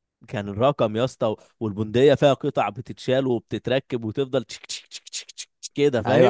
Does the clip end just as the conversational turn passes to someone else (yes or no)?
yes